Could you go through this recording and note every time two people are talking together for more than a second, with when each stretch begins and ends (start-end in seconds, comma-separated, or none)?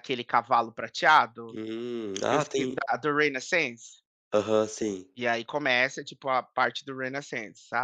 none